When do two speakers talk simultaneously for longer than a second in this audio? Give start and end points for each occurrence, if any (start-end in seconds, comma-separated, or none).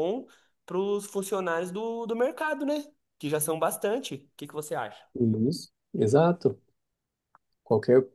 none